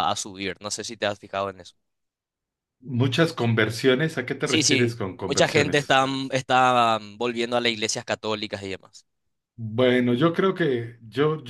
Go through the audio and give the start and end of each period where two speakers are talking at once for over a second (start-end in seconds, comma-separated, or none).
4.4-6.0